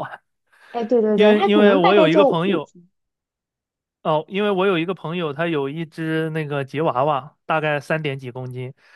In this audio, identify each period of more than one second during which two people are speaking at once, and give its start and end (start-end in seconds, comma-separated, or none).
1.1-2.7